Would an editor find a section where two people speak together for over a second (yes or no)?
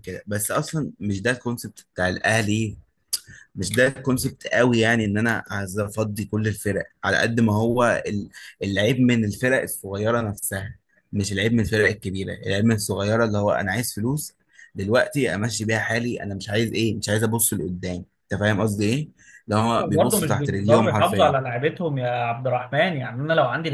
yes